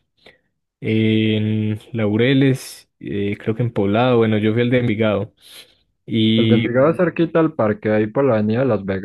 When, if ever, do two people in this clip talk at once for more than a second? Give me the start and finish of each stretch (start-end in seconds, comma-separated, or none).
none